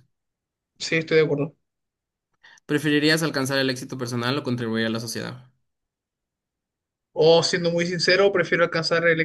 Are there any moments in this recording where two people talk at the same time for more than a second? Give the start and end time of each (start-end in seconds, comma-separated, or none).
none